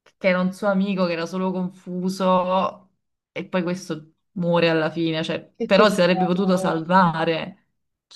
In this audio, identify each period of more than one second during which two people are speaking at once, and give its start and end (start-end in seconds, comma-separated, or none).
5.6-7.1